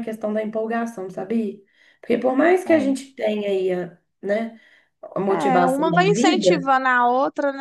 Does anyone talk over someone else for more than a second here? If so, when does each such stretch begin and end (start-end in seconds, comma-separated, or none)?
5.3-6.7